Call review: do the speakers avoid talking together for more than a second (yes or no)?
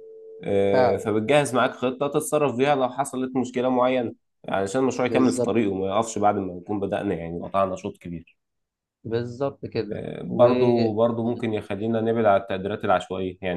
yes